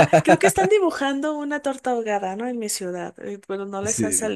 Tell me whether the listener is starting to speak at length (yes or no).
no